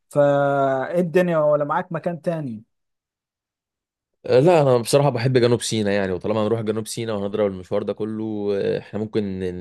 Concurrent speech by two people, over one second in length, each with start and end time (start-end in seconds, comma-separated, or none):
none